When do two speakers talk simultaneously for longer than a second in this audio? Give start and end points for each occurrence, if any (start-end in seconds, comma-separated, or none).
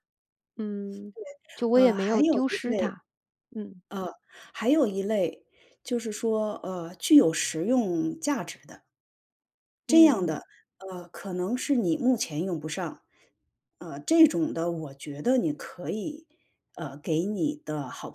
1.7-2.9